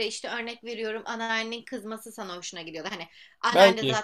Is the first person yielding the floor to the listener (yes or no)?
no